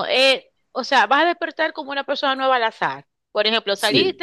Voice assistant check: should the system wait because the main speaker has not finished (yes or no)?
yes